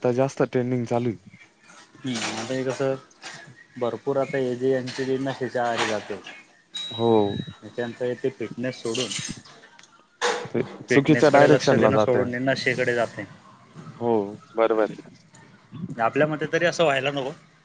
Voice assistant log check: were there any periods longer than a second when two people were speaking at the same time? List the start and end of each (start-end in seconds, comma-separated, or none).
10.9-12.3